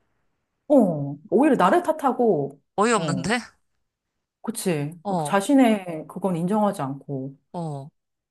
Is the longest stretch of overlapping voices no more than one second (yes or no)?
yes